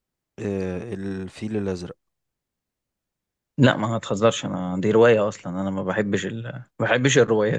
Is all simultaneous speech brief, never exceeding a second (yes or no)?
yes